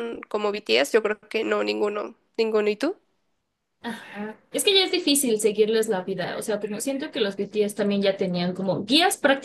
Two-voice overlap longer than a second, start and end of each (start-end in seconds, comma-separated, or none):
none